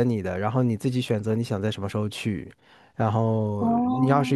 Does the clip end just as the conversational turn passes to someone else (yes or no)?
no